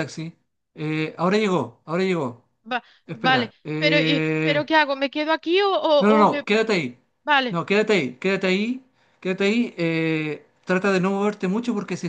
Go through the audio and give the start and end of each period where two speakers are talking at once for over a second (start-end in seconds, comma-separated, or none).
3.1-4.7